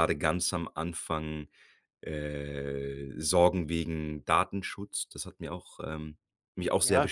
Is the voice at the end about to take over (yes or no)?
yes